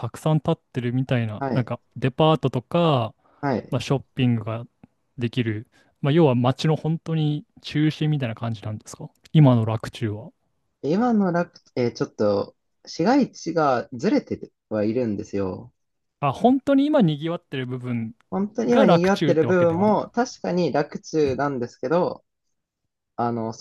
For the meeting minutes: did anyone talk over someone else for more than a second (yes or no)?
yes